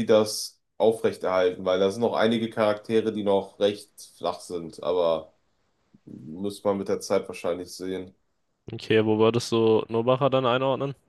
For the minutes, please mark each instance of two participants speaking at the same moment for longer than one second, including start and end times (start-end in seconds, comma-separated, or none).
none